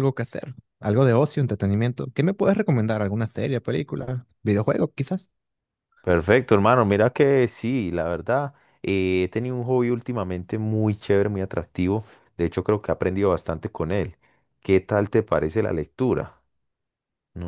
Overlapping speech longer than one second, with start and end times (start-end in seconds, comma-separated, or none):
none